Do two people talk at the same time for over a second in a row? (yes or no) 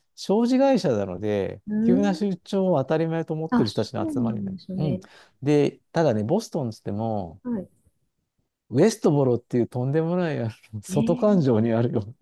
yes